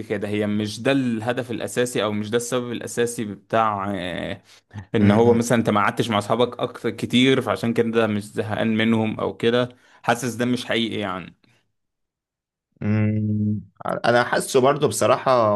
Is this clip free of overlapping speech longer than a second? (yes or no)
yes